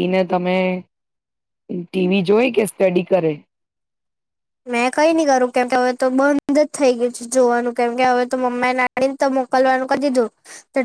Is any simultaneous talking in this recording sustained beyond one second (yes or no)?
no